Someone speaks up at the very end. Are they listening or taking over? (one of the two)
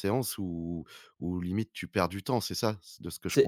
taking over